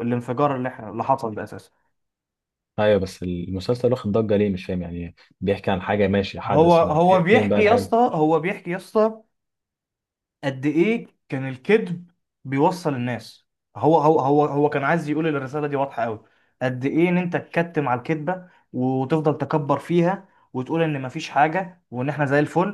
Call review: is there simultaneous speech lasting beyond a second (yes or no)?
yes